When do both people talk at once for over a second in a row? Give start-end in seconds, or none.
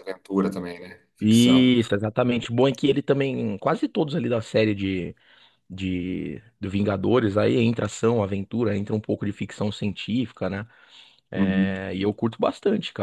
none